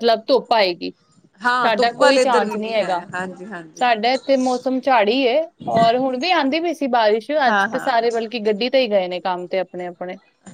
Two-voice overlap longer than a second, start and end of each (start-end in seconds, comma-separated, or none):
1.6-3.0